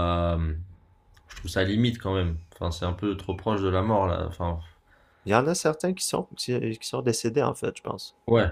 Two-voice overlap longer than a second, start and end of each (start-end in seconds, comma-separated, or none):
none